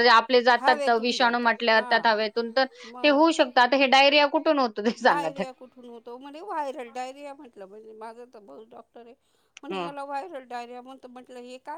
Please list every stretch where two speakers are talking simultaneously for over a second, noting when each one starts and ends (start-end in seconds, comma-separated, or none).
0.6-2.1